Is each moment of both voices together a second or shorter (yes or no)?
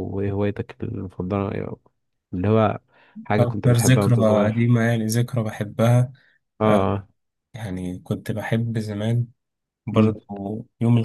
no